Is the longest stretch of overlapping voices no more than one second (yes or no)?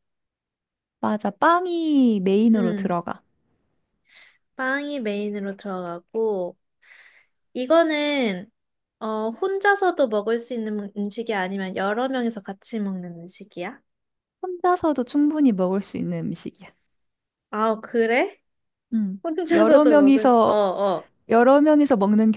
no